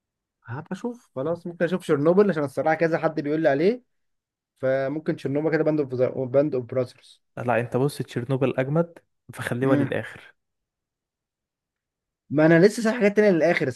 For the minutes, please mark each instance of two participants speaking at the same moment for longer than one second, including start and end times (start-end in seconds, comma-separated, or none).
none